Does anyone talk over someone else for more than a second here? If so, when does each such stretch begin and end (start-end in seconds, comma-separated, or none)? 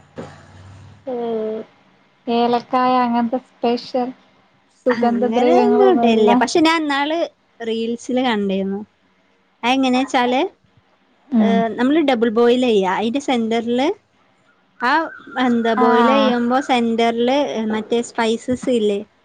5.0-6.3